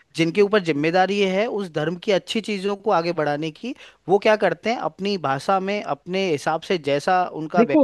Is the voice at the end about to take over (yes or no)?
yes